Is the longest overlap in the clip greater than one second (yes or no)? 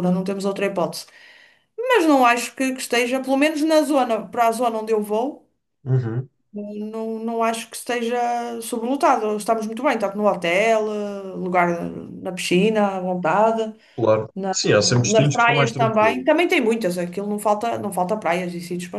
yes